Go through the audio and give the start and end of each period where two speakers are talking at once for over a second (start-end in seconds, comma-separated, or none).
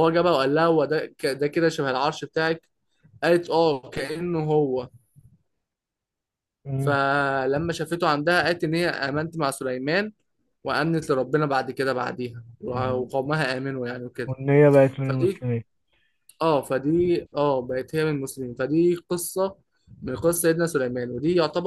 none